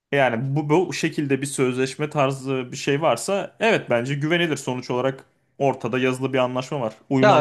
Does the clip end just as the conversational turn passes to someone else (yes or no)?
yes